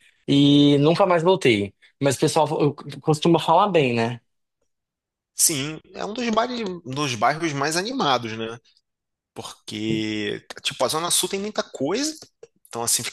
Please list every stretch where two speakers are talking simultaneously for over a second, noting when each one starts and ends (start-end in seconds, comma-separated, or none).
none